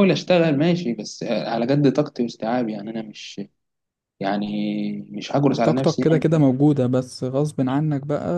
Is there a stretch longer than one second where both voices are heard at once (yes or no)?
no